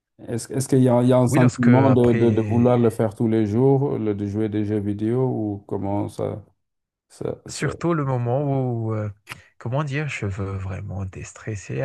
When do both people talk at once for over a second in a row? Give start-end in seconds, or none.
1.3-2.8